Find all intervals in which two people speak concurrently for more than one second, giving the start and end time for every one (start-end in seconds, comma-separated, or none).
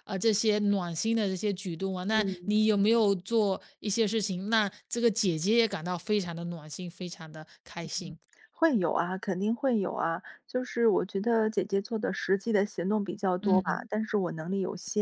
none